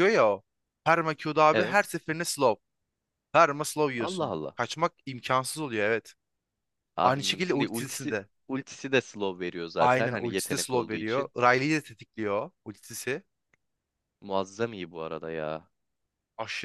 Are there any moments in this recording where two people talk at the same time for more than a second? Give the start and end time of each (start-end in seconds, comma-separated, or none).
7.0-8.3, 9.8-11.3